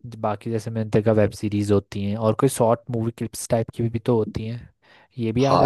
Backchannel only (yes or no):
no